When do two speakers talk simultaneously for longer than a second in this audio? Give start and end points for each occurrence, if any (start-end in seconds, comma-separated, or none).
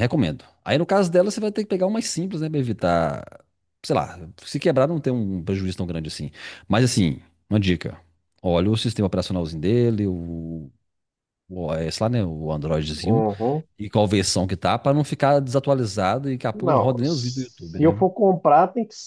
16.5-18.0